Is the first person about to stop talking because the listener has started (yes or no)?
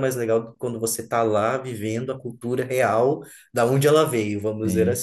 yes